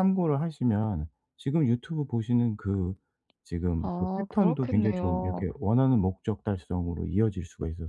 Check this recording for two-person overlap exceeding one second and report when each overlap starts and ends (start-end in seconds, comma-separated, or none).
3.8-5.5